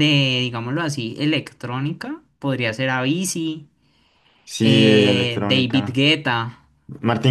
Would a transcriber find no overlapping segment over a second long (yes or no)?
no